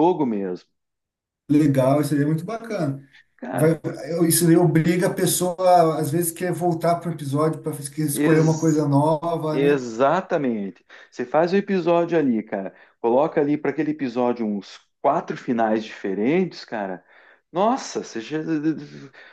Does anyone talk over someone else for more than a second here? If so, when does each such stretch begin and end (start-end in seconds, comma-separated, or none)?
none